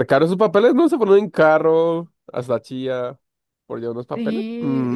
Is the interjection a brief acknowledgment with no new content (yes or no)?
no